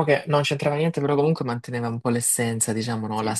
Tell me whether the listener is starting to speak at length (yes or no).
no